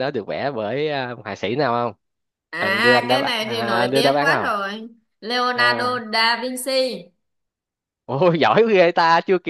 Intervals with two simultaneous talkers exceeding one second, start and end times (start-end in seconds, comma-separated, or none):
2.6-4.5